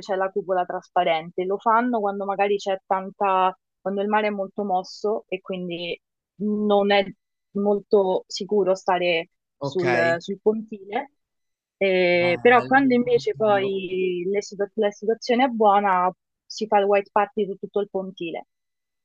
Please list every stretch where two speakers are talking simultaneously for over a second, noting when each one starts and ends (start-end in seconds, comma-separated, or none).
12.2-13.7